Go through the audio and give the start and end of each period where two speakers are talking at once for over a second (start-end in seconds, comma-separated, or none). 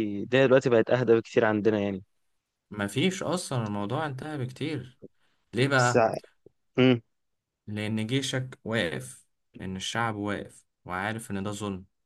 none